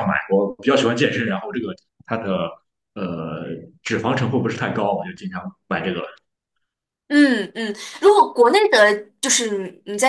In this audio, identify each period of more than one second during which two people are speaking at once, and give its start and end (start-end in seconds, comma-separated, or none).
none